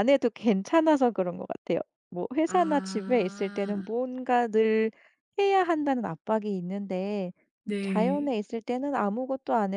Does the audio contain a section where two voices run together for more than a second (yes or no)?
yes